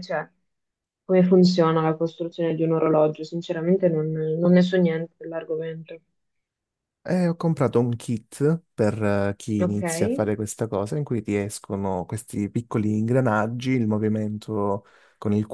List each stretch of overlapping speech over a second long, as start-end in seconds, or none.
none